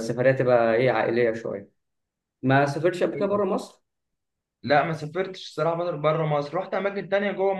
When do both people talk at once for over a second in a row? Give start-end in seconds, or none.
none